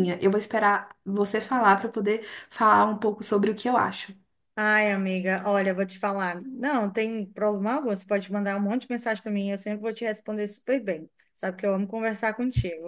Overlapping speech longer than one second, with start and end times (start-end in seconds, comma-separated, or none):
none